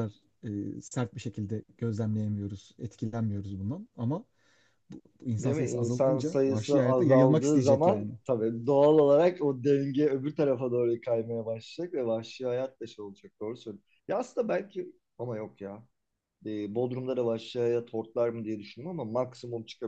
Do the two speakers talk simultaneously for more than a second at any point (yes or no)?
yes